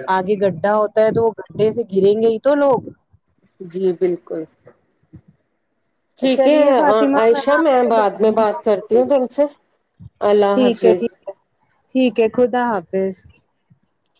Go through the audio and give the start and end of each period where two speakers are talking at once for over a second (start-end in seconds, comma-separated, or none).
7.6-9.0